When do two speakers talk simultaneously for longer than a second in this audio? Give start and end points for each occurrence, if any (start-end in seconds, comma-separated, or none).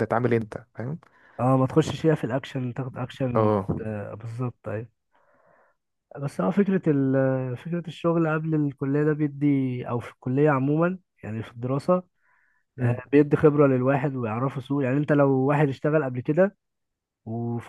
none